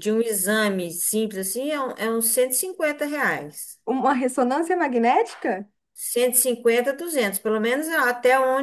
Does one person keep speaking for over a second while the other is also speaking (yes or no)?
no